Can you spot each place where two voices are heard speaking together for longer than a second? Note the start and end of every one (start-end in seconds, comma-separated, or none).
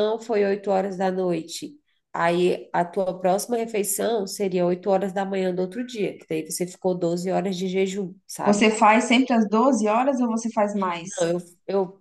none